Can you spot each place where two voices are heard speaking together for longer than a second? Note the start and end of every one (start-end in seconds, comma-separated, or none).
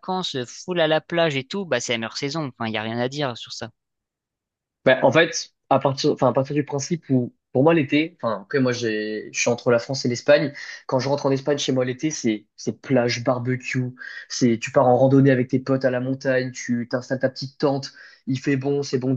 none